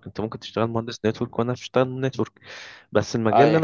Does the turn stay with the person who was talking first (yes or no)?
yes